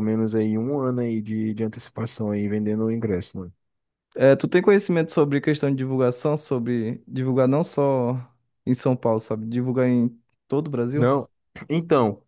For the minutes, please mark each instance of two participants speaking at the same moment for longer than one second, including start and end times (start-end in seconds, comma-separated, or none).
none